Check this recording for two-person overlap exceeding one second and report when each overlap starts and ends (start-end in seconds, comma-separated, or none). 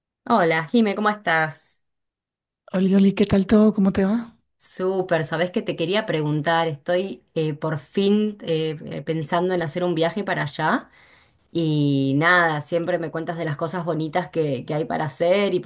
none